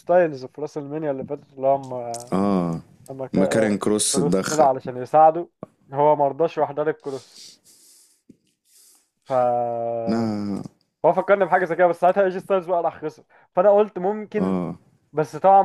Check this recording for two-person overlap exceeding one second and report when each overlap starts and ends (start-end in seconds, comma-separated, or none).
3.3-4.7